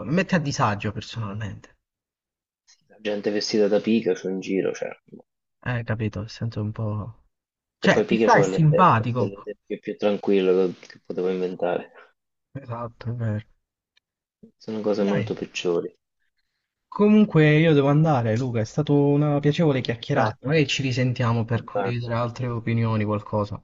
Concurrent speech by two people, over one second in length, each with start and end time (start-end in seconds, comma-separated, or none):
7.8-9.5